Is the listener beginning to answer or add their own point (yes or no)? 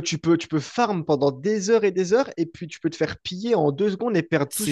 yes